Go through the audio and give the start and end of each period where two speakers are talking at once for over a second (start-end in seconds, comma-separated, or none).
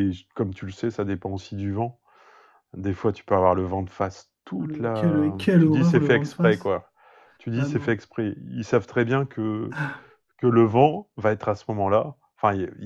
4.6-6.7